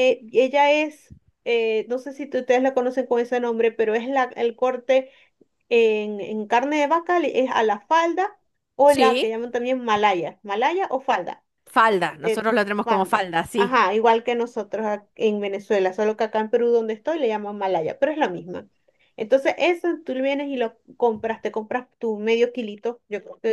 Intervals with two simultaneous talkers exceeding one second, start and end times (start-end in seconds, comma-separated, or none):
12.2-13.8